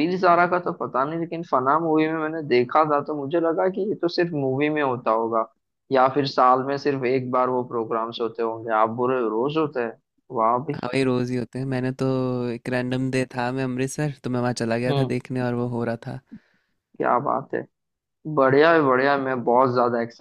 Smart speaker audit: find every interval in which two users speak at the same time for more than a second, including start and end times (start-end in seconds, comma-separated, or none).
none